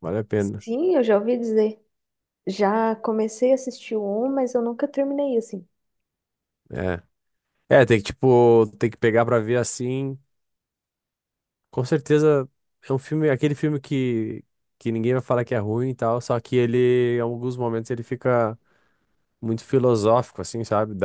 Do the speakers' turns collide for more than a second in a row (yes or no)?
no